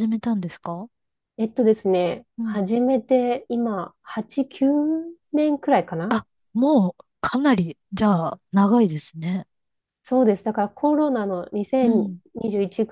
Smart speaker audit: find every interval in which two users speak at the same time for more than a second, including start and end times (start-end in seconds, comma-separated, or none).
none